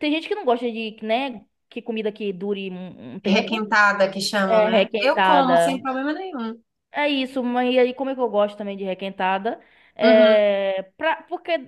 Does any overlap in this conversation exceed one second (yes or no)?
yes